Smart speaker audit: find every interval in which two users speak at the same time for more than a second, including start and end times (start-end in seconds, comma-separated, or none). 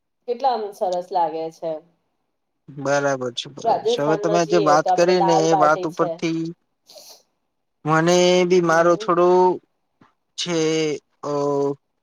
3.7-6.1